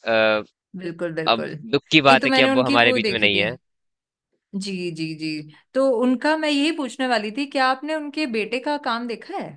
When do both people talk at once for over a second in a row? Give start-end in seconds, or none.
1.3-3.5